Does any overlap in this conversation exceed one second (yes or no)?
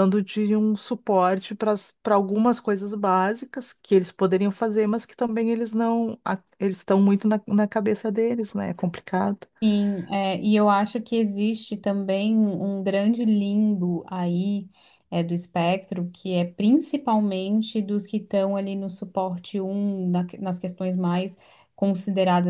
no